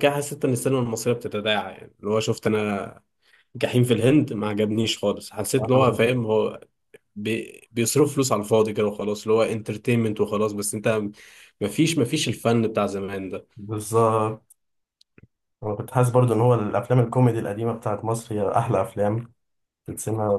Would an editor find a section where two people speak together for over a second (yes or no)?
no